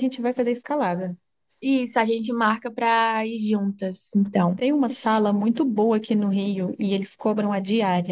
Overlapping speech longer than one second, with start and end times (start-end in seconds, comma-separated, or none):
none